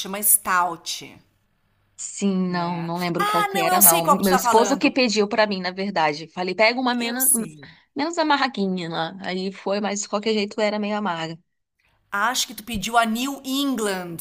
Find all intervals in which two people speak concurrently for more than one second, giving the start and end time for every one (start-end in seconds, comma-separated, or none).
2.5-4.9